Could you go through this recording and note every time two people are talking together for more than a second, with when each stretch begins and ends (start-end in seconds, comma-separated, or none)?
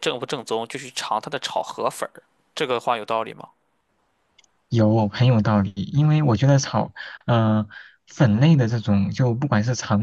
none